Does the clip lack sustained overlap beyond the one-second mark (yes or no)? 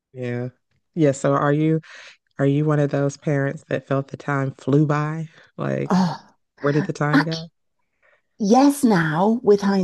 yes